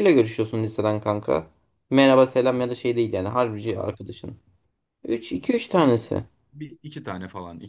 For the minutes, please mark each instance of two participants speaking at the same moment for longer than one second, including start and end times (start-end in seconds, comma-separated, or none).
none